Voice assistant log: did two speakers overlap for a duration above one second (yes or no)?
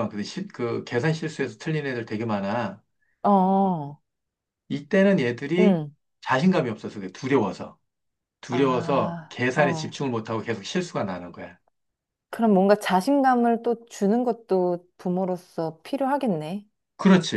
yes